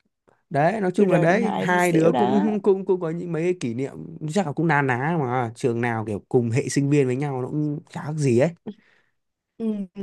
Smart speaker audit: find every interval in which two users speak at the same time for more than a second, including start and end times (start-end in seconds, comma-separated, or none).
1.0-2.5